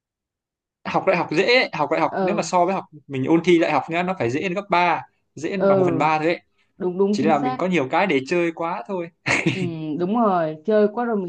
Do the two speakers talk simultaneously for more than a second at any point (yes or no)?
no